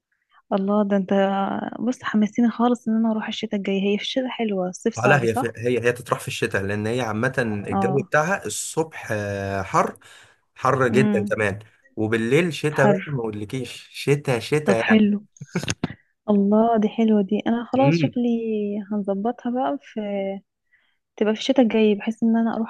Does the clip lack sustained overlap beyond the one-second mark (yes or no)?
yes